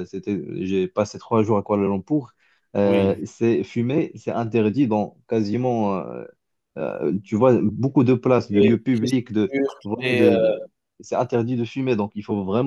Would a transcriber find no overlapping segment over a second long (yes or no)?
no